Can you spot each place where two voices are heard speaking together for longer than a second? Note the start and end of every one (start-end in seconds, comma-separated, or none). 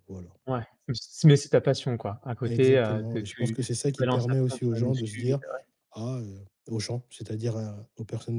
2.5-5.4